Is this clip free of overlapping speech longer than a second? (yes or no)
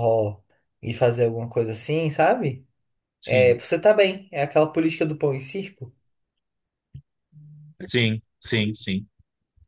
yes